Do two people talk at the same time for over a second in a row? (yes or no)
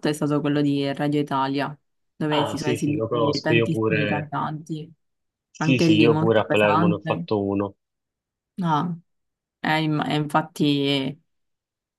yes